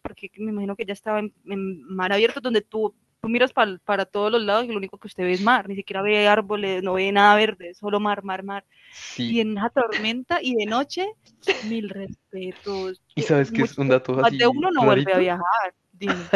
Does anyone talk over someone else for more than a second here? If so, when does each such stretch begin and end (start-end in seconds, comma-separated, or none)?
13.1-15.3